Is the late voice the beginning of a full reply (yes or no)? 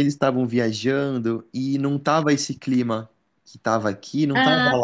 yes